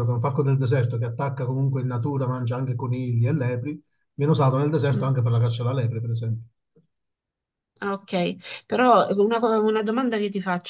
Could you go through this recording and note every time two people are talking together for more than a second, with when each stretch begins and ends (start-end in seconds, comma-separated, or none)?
none